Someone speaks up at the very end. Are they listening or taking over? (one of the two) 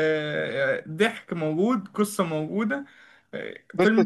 taking over